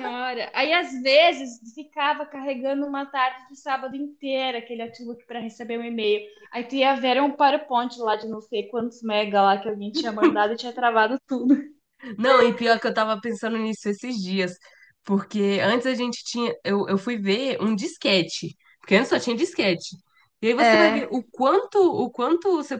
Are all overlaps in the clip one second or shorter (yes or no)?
yes